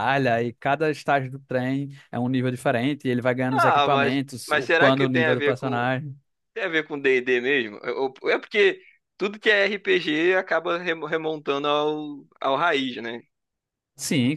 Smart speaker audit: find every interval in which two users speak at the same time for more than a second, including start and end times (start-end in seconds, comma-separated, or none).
3.5-5.9